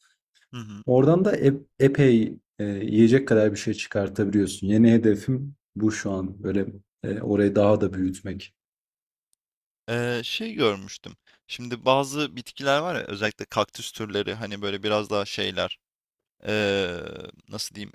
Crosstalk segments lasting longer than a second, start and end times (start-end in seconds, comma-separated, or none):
none